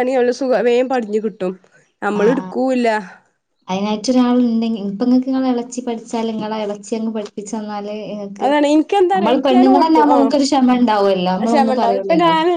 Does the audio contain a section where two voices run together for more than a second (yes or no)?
yes